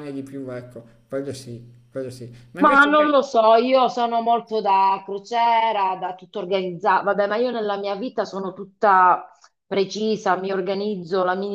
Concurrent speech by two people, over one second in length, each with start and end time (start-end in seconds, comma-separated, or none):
none